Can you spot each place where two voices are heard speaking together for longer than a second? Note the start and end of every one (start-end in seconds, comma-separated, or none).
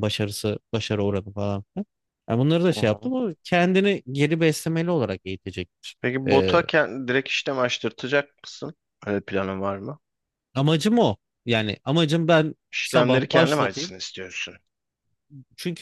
12.7-13.9